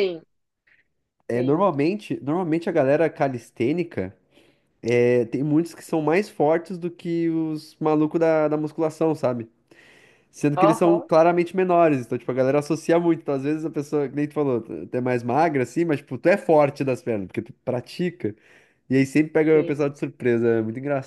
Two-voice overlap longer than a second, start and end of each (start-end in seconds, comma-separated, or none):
none